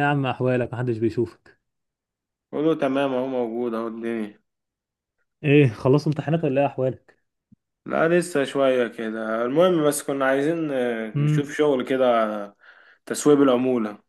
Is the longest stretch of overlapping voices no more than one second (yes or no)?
yes